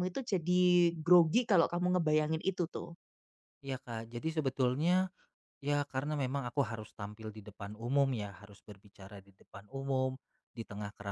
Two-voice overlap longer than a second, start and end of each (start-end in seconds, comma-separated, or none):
none